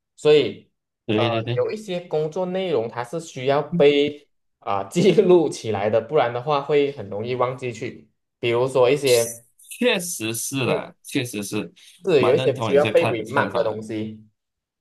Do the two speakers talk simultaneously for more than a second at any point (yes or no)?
yes